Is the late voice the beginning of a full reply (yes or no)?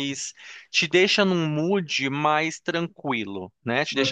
no